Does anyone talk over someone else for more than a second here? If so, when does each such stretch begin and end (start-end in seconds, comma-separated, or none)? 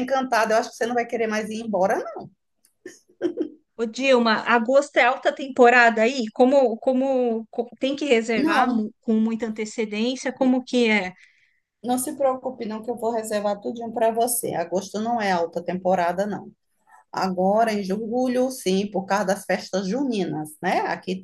none